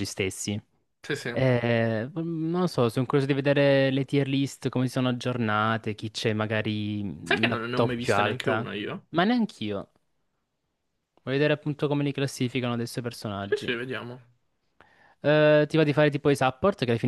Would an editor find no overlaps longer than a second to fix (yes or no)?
no